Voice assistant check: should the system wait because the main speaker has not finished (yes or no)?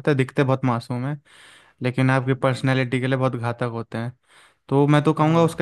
yes